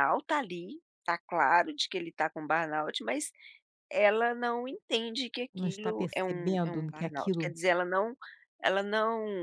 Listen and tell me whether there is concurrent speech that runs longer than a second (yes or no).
yes